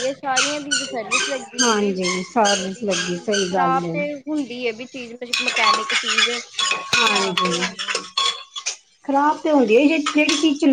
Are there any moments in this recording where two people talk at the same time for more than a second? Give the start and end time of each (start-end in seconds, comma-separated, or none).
1.6-3.7